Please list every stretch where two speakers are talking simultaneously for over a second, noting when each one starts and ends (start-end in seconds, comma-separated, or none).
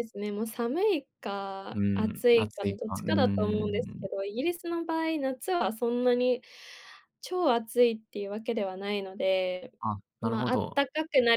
1.7-4.1